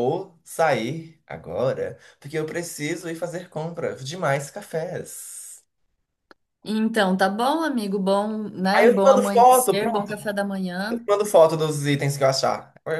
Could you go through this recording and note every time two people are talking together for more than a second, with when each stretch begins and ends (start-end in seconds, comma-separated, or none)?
8.7-10.1